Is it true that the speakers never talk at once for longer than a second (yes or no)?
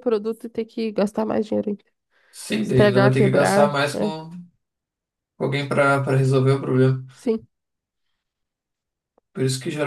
no